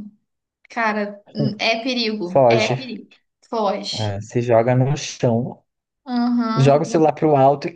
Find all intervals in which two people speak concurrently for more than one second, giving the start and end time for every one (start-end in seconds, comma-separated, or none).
none